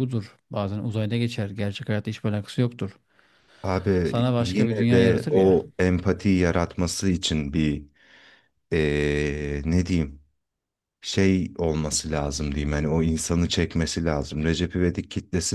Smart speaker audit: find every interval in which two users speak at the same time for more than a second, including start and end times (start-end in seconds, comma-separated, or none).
4.0-5.5